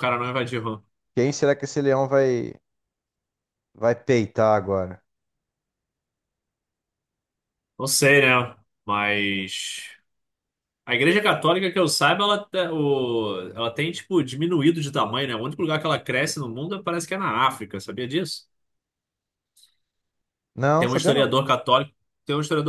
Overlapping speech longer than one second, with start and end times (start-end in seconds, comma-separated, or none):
none